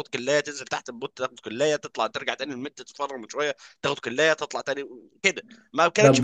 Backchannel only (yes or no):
yes